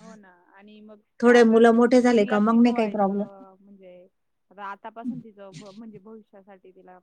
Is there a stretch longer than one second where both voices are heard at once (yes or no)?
yes